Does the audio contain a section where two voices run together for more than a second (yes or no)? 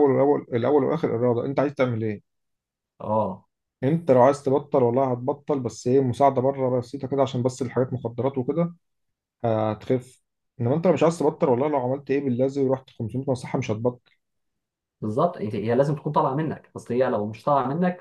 no